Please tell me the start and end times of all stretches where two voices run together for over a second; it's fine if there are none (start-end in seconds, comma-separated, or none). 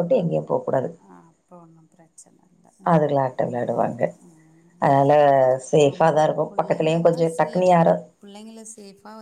5.9-7.8